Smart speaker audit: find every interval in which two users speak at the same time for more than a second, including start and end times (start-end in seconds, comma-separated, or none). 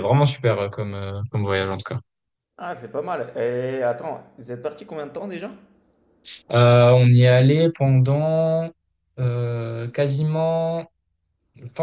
none